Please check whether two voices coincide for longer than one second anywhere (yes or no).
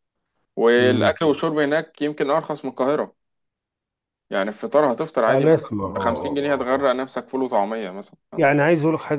yes